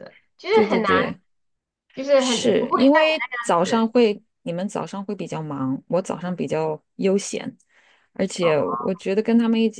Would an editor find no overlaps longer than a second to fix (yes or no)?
no